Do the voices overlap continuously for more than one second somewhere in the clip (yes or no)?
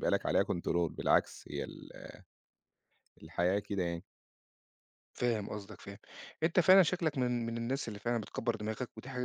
no